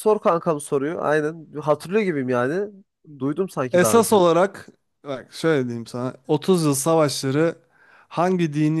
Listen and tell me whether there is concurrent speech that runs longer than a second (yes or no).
no